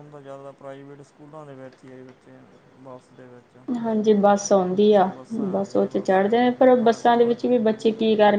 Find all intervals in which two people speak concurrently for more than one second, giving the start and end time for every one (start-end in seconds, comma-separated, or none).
5.5-7.8